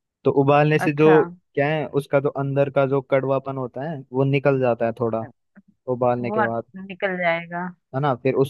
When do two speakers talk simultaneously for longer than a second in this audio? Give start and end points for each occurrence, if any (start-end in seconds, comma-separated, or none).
none